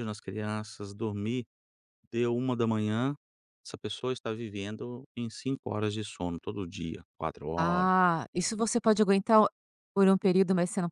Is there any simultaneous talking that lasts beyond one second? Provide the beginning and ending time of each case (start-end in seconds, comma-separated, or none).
none